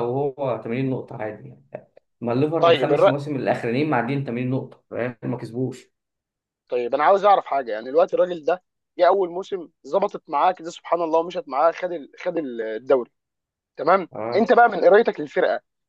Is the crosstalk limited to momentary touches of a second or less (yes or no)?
yes